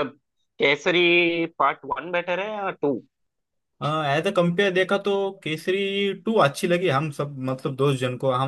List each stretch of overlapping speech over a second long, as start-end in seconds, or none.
none